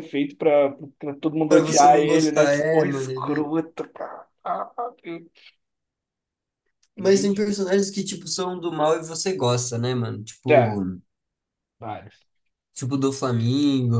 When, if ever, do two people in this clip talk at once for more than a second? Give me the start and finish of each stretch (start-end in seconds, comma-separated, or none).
1.5-3.5